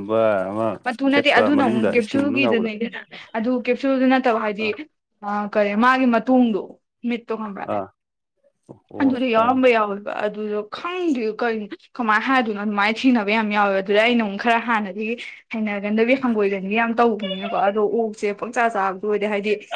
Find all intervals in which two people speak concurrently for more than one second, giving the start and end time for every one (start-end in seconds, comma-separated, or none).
1.1-2.7